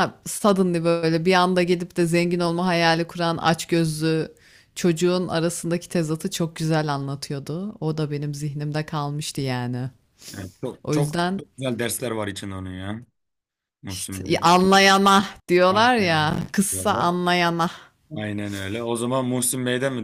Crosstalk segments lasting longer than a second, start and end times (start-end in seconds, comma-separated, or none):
15.7-17.1